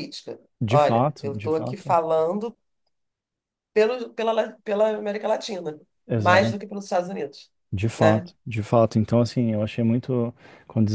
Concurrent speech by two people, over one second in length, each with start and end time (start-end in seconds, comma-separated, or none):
0.6-2.0